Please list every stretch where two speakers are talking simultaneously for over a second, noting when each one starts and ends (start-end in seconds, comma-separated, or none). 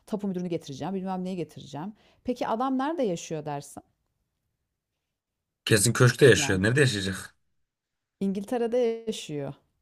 none